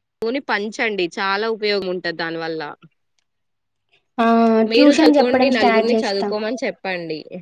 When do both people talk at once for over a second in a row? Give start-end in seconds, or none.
4.8-6.3